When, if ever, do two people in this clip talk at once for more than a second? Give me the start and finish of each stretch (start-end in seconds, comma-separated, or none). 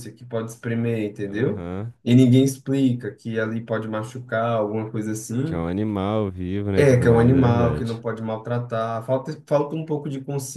6.8-8.0